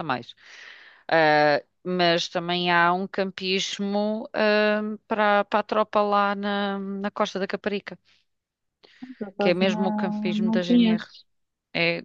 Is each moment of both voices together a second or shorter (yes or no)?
no